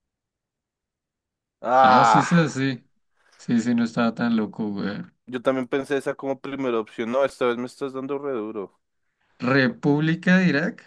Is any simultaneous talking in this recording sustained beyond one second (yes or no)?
no